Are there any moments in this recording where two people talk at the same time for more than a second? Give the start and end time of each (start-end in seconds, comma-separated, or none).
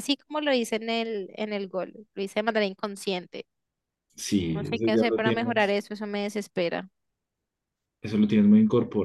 4.5-5.8